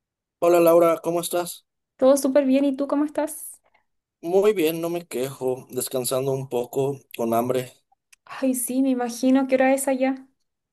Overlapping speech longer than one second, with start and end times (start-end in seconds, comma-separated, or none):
none